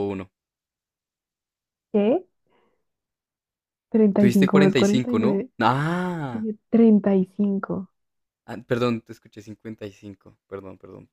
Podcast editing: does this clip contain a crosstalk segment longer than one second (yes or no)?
yes